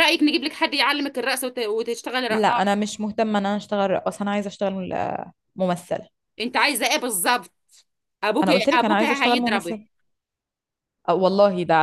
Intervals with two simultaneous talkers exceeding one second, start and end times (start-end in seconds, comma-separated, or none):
8.4-9.8